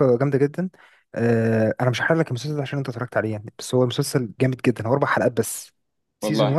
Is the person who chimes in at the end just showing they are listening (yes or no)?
yes